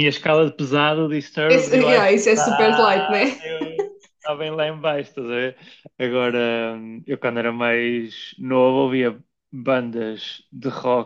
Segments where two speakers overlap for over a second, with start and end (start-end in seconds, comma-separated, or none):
1.5-3.4